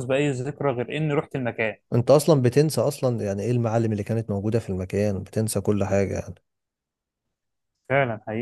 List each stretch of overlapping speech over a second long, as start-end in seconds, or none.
none